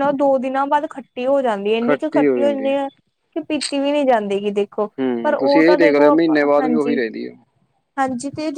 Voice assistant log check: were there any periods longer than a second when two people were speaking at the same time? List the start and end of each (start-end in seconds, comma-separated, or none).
5.2-7.0